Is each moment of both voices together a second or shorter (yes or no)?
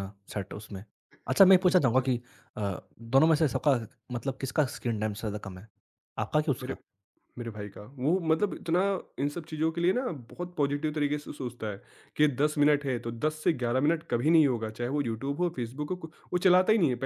yes